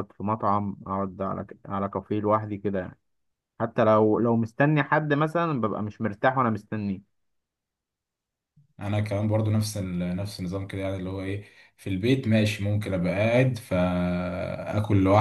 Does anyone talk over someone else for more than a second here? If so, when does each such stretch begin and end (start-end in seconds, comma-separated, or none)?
none